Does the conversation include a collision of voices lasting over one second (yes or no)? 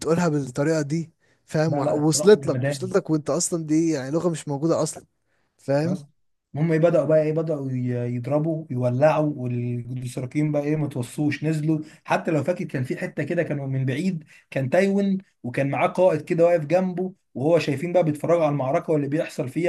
yes